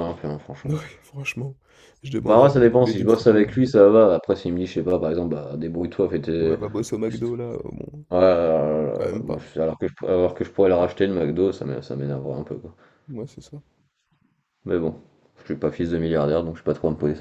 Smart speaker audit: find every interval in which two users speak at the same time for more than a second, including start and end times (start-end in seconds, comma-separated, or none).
2.2-3.7